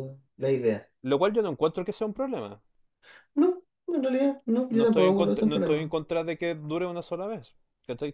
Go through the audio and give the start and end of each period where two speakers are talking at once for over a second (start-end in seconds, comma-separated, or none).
4.7-5.9